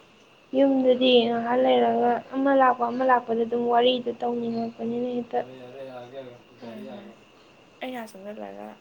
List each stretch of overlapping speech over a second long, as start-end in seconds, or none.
none